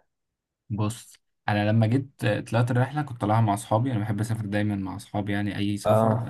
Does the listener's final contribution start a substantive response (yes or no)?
no